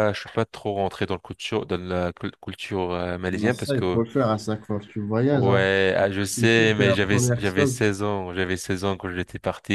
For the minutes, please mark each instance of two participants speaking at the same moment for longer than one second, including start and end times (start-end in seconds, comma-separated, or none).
5.3-7.8